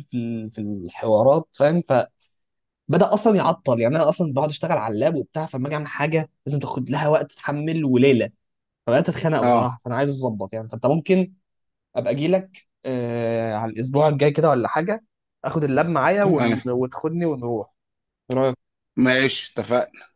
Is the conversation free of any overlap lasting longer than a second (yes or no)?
yes